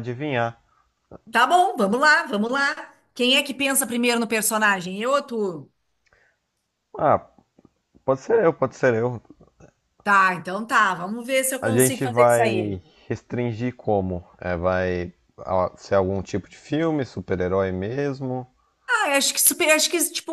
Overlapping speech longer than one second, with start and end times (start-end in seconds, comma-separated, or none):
11.6-12.8